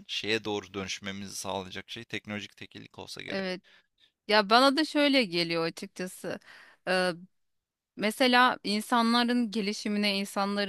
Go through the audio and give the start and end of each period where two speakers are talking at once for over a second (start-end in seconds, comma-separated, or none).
none